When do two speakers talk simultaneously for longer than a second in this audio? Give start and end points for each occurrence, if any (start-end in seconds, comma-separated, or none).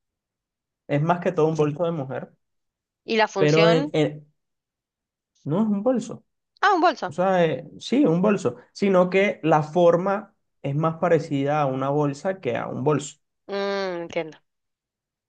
none